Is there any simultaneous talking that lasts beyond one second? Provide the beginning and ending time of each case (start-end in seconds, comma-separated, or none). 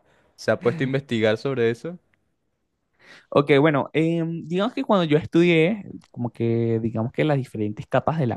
none